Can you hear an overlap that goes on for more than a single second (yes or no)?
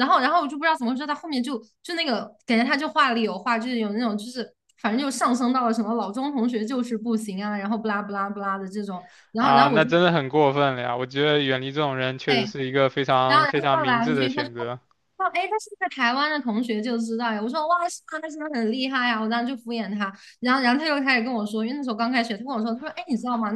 yes